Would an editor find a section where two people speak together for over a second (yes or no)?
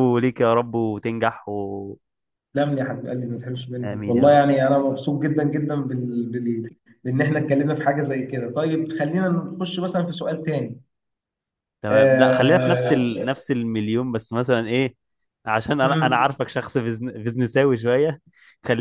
yes